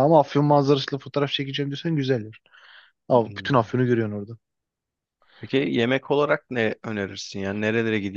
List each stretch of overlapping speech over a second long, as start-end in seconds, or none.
none